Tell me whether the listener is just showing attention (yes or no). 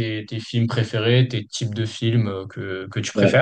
no